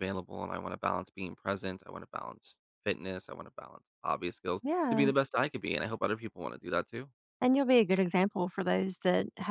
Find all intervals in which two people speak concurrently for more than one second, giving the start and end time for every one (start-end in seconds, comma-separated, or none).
none